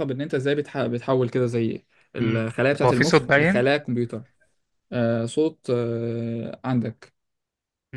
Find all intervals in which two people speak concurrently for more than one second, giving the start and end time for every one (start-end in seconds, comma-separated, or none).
2.2-3.7